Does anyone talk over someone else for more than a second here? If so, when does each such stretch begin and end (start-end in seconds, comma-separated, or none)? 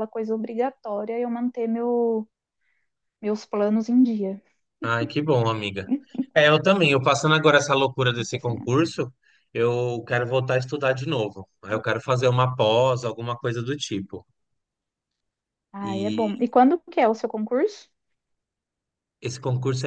none